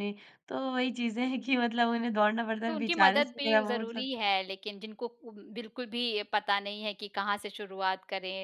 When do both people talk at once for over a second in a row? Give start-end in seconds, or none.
2.7-4.1